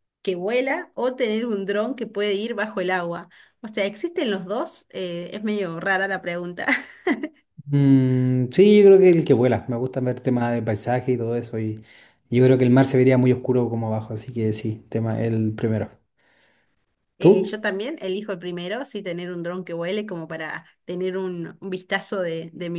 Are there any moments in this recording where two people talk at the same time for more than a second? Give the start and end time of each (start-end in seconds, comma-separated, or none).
none